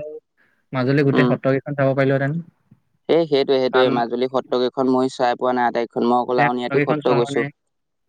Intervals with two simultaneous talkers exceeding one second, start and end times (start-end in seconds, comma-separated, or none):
none